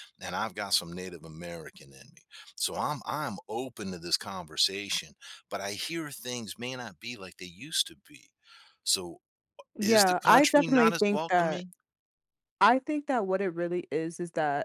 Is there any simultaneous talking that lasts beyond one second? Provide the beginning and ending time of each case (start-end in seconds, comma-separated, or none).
9.8-11.6